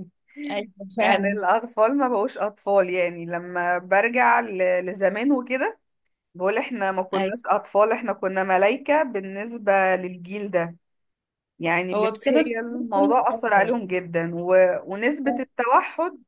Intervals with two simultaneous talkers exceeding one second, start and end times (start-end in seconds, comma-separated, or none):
11.9-13.8